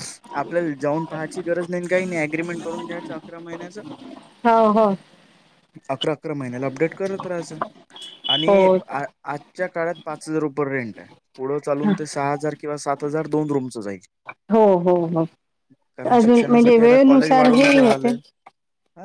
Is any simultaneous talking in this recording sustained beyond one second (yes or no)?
yes